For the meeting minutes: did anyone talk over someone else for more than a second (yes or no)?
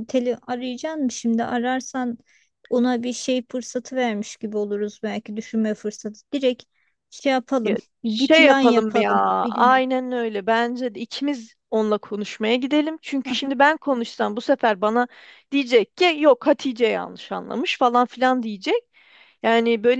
yes